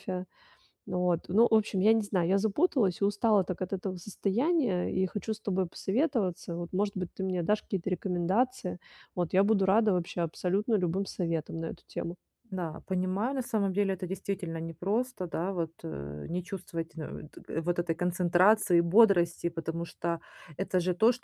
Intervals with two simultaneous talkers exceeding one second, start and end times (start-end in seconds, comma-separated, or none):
none